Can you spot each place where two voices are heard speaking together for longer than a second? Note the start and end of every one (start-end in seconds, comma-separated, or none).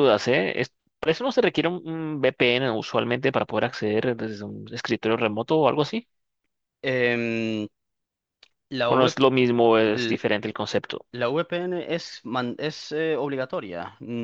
none